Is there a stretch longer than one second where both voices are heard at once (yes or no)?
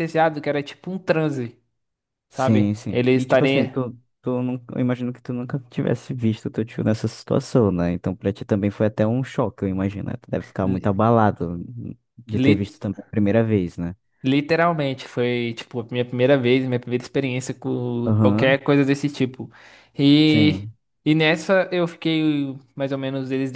yes